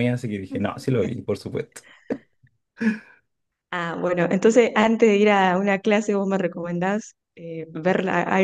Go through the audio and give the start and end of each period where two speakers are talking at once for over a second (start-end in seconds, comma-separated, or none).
none